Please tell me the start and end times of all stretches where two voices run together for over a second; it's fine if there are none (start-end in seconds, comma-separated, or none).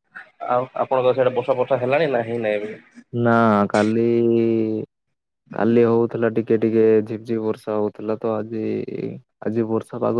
none